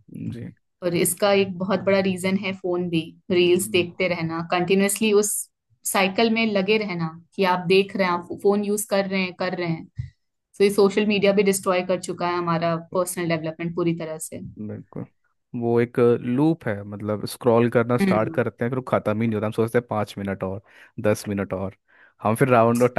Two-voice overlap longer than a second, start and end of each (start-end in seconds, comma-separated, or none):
none